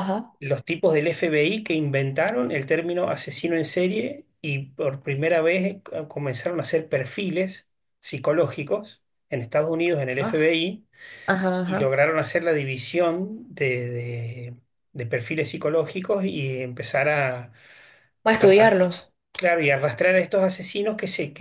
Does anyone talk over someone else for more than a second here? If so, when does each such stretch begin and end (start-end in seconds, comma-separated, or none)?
none